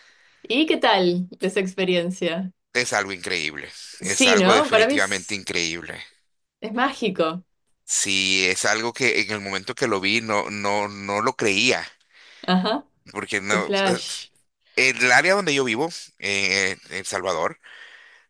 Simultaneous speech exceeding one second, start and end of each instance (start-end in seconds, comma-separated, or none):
4.0-5.4